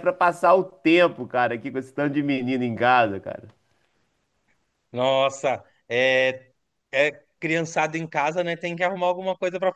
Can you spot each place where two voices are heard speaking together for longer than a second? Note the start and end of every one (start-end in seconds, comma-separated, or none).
none